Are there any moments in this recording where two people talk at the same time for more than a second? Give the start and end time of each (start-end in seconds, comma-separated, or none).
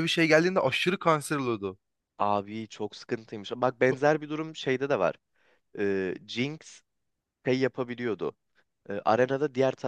none